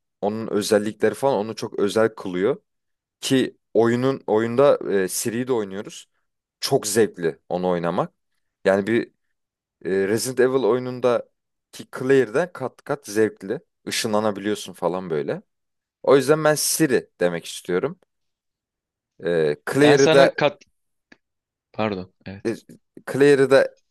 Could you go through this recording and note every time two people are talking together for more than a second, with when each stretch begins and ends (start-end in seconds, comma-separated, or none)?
none